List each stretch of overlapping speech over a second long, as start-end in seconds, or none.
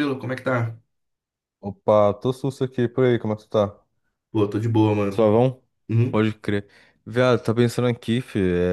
none